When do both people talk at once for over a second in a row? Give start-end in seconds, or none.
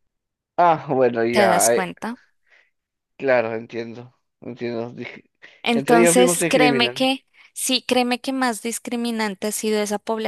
5.7-7.1